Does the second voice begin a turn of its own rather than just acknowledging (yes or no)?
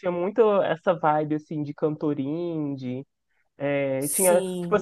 no